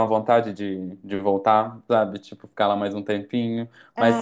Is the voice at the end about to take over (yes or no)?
no